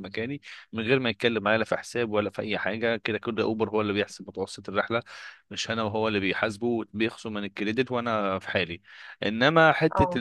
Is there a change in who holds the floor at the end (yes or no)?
no